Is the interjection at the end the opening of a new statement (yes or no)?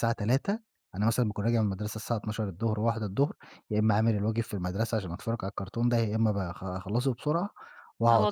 yes